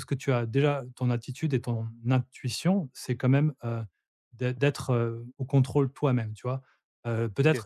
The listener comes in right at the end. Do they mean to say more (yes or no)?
no